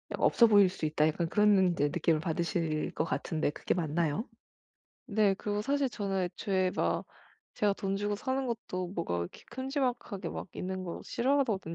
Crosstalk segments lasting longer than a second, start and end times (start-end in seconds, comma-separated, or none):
none